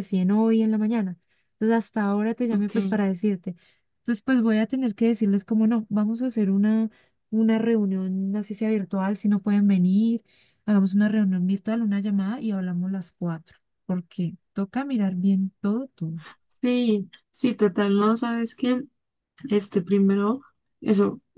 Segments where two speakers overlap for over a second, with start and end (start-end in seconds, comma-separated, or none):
none